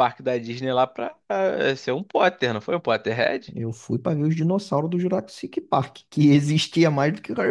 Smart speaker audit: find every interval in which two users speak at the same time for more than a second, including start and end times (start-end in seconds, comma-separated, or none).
none